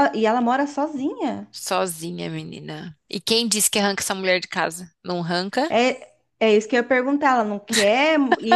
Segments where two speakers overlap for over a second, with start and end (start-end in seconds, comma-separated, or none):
none